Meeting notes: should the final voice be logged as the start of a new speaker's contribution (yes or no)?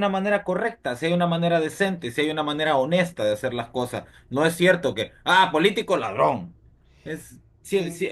yes